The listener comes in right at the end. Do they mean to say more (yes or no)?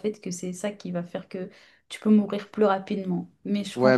yes